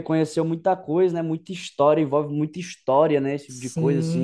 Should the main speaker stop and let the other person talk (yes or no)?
yes